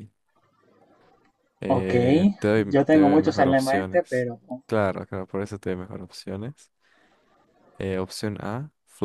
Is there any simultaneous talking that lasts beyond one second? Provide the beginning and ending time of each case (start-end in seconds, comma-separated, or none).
2.7-4.3